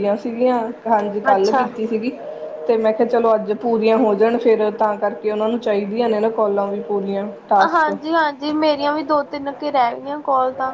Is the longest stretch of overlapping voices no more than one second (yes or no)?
yes